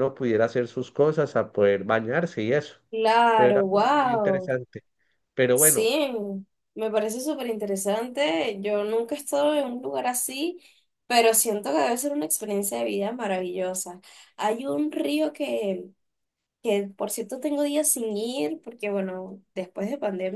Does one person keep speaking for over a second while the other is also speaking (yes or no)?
yes